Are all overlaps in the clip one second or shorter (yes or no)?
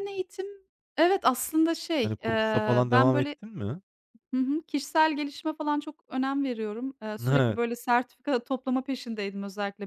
no